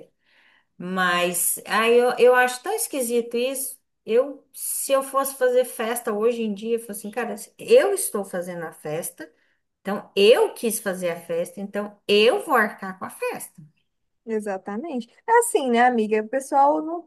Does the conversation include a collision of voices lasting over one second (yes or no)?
no